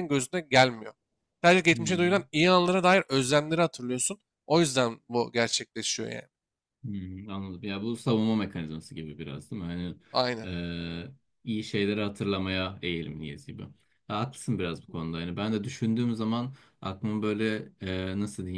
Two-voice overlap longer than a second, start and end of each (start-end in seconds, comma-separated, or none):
none